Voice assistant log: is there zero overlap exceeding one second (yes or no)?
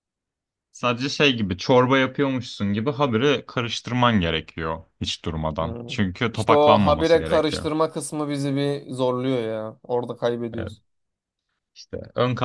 no